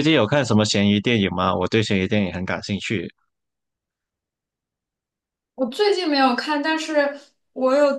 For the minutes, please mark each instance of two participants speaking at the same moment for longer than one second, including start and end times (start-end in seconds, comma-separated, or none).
none